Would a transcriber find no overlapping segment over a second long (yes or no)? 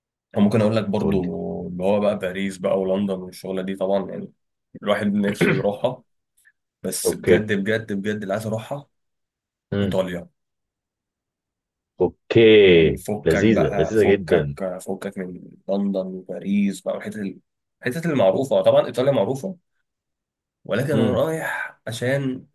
no